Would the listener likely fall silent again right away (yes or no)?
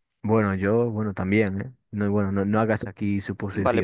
no